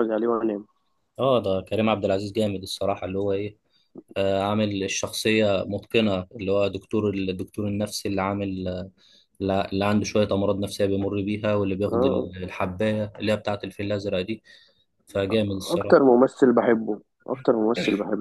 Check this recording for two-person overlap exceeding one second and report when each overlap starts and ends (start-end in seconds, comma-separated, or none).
none